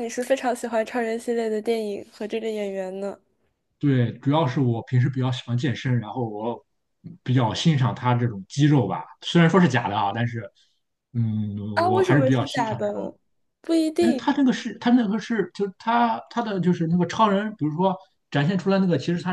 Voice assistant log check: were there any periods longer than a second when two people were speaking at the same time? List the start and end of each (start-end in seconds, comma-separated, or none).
11.7-13.1